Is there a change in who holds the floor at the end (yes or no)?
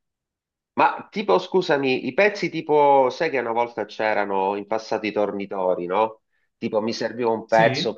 no